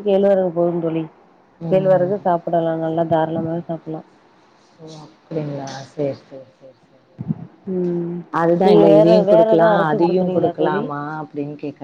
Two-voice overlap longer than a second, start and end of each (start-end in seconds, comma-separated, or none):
9.0-10.8